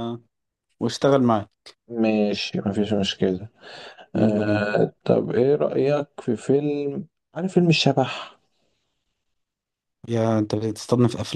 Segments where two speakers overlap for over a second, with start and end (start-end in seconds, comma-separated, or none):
none